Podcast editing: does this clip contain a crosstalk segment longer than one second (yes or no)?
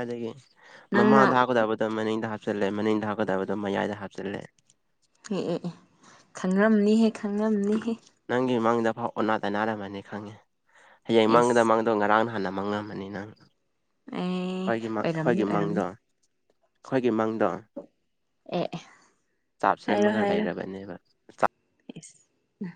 yes